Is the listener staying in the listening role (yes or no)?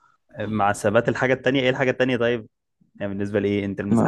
no